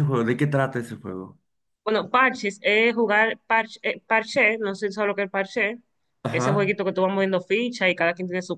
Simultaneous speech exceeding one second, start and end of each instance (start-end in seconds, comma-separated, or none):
none